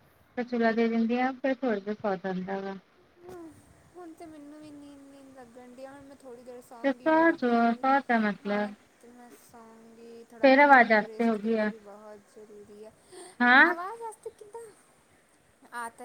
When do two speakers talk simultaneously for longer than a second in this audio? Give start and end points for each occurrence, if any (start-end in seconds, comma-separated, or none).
10.4-11.7